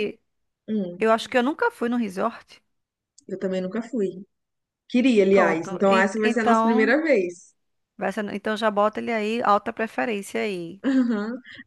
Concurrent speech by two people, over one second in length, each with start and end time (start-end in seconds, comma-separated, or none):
5.3-7.0